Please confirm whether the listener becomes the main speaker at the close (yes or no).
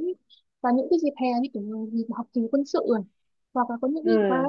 no